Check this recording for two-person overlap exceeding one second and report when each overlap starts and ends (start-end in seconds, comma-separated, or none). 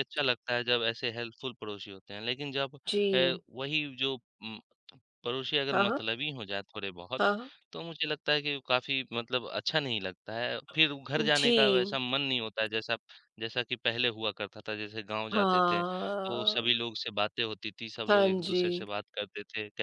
15.3-16.8